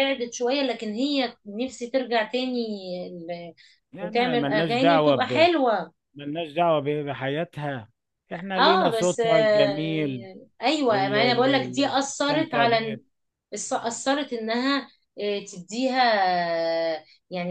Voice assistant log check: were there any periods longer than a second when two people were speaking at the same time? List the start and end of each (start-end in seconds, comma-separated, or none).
4.0-5.5, 8.6-10.2, 10.9-13.0